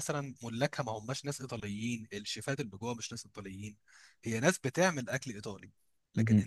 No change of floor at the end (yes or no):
yes